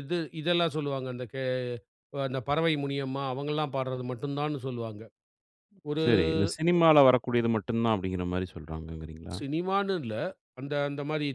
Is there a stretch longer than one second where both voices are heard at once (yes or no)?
no